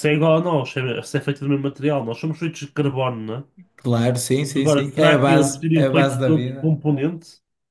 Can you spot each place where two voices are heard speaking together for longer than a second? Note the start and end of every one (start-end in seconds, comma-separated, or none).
4.6-6.8